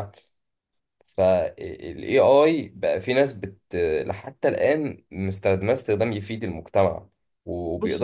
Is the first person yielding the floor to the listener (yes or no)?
no